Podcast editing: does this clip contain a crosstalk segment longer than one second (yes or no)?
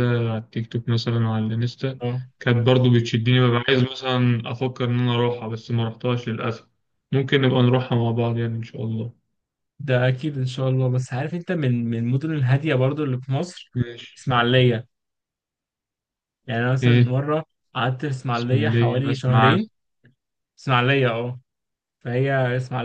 yes